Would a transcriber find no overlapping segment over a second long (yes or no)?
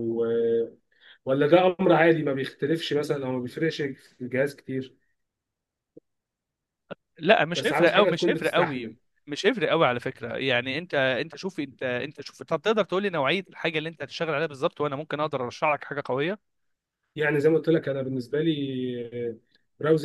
no